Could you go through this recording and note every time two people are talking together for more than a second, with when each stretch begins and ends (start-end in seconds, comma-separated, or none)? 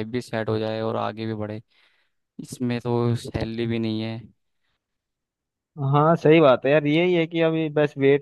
none